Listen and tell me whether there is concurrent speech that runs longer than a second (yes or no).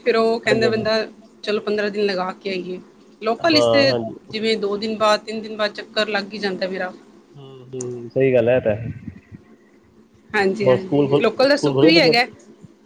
yes